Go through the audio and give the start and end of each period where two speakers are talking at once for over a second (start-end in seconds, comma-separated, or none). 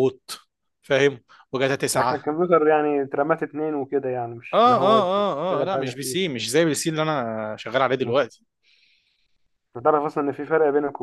4.5-6.3